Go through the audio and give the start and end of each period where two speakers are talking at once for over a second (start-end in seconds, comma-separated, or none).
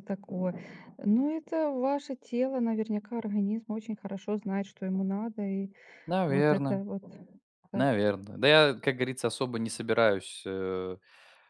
none